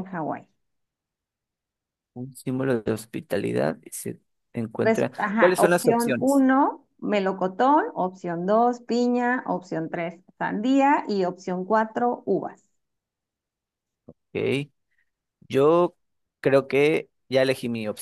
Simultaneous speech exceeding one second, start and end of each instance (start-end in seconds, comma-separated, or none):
4.8-6.4